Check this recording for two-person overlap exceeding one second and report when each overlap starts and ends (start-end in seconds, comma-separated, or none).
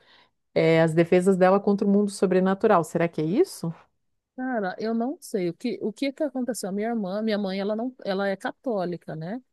none